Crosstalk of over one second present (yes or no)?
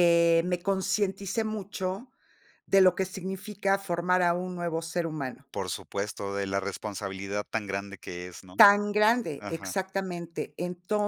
no